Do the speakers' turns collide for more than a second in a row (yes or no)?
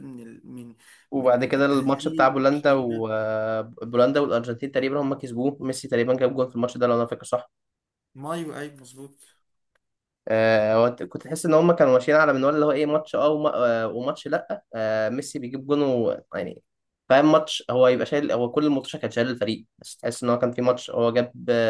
yes